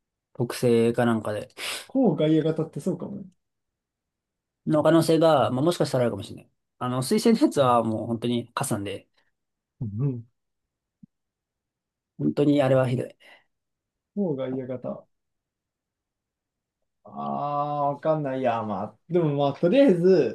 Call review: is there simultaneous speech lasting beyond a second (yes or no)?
no